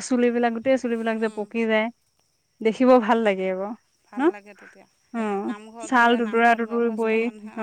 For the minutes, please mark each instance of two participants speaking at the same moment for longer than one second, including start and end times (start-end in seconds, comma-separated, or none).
none